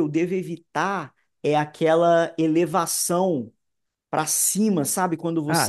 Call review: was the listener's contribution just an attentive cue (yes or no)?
yes